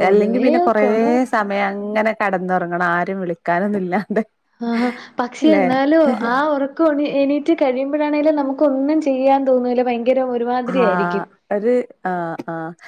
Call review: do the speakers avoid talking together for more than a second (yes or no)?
yes